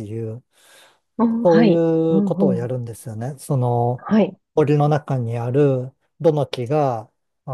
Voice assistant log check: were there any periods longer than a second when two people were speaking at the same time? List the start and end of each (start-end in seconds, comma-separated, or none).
1.4-2.7